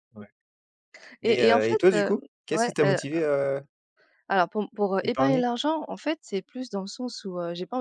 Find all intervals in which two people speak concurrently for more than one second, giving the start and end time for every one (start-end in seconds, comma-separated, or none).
1.2-3.0